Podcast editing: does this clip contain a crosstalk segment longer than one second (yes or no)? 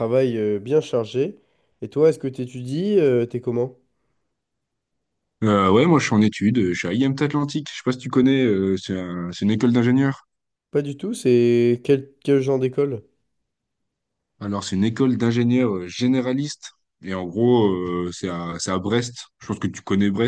no